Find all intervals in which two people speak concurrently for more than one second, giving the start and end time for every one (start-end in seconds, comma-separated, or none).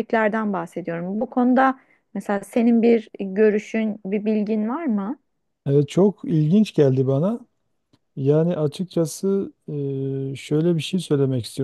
none